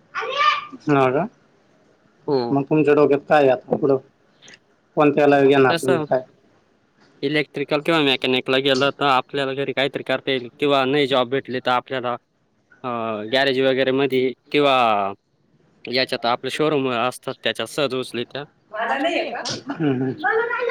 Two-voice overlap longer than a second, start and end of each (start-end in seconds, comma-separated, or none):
none